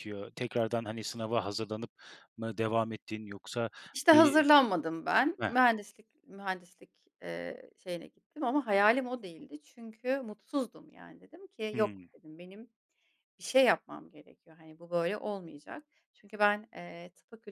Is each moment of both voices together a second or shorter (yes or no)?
yes